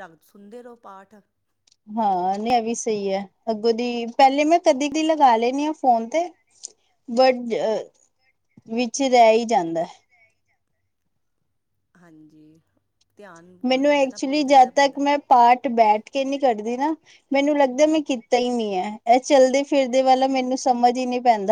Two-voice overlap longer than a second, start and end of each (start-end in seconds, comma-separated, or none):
13.7-15.0